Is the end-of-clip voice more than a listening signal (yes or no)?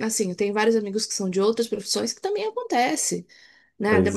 no